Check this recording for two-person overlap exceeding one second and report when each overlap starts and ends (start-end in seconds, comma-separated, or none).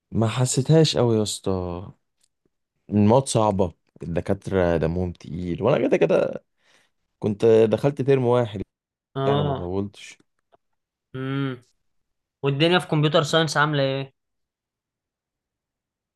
none